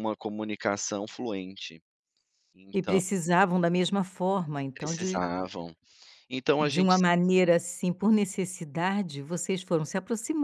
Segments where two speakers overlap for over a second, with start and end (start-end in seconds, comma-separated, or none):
none